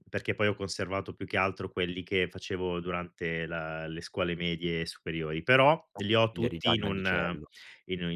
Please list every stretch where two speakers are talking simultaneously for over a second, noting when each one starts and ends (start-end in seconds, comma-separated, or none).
6.0-7.5